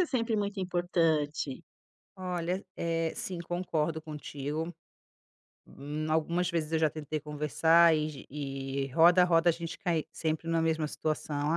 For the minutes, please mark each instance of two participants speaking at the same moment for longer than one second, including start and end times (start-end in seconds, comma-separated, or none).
none